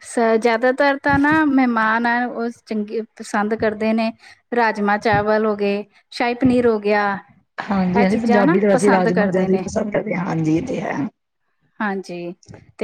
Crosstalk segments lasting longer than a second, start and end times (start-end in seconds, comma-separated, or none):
8.0-9.6